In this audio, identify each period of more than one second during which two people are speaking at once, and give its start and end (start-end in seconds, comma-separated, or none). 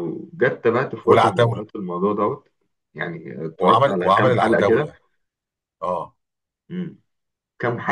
3.6-4.9